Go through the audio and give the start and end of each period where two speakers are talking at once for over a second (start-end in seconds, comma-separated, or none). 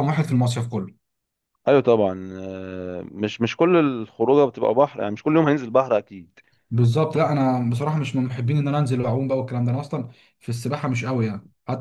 none